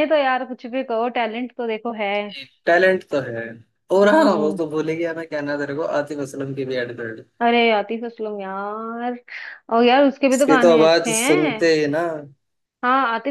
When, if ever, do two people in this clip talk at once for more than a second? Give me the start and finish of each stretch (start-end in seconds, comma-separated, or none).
10.3-11.6